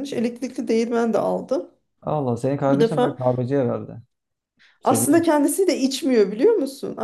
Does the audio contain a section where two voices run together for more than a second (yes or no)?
no